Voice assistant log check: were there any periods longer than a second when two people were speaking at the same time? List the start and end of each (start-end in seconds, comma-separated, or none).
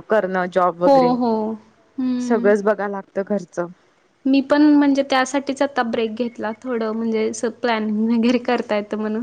none